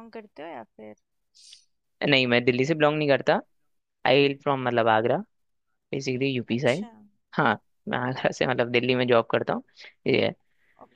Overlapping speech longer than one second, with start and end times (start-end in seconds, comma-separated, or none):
none